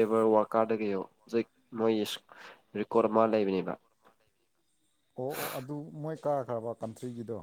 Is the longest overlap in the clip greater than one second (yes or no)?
no